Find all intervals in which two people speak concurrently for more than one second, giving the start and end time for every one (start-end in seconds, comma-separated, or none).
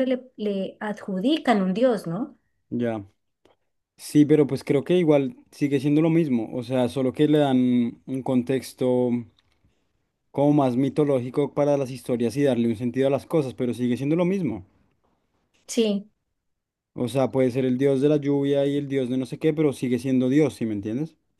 none